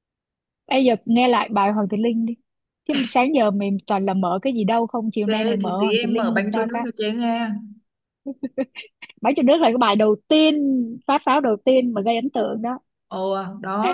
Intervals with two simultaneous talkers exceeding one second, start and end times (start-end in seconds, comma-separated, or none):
5.2-6.9